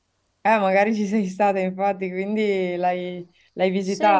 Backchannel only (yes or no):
no